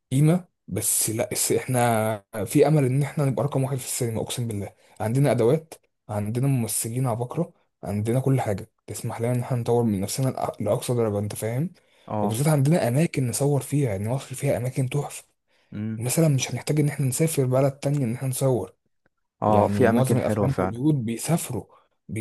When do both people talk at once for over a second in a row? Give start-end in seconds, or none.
19.5-20.8